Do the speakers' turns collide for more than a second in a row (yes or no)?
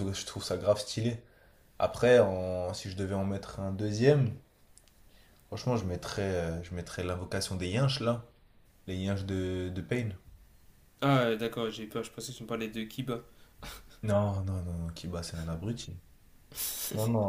no